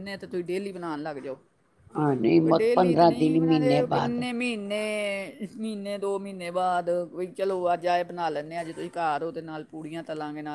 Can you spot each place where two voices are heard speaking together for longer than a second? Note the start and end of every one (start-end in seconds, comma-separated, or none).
2.6-4.2